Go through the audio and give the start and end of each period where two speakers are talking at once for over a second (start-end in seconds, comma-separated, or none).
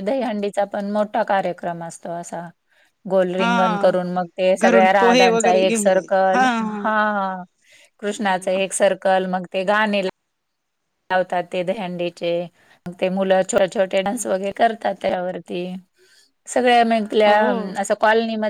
4.6-6.2